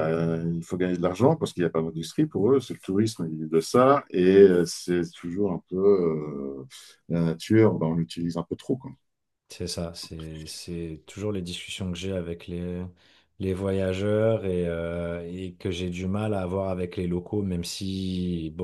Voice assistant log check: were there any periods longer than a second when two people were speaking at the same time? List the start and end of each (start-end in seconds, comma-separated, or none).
none